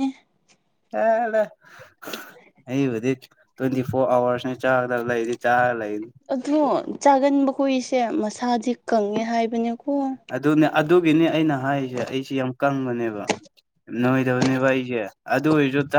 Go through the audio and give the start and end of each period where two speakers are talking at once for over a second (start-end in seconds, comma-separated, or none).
none